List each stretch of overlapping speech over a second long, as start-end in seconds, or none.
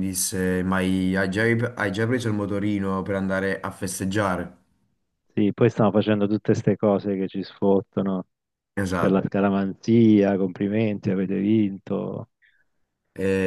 none